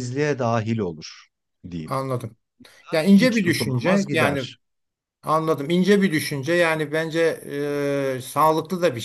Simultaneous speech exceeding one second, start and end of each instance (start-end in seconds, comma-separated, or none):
3.1-4.4